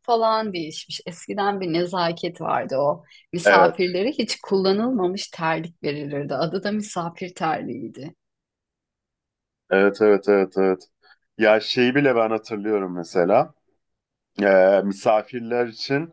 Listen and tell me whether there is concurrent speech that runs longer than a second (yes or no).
no